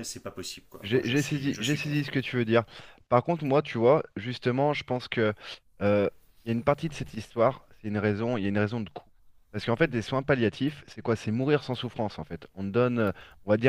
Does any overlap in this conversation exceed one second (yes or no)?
yes